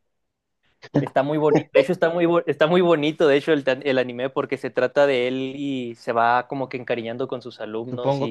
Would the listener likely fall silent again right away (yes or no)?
no